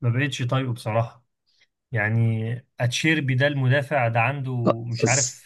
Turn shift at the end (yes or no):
no